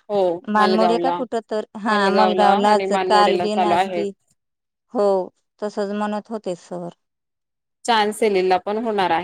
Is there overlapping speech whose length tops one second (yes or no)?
yes